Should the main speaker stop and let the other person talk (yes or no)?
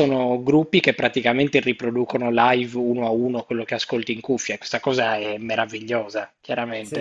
yes